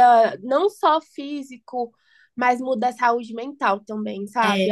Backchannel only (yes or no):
yes